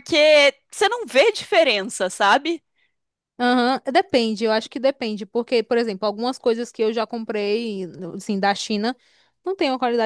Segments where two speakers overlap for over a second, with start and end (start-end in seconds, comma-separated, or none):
none